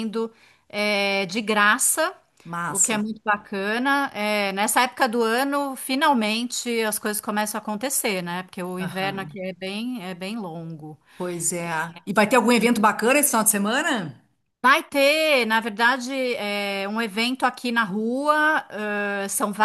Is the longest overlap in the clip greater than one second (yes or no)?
no